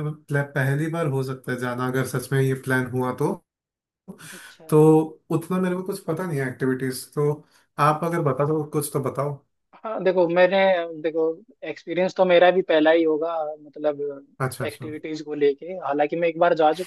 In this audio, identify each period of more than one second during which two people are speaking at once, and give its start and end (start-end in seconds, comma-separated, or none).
none